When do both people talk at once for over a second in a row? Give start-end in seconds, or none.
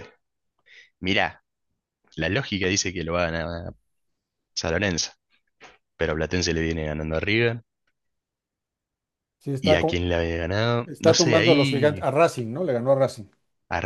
10.8-12.1